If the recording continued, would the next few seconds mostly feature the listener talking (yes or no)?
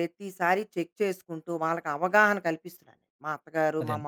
no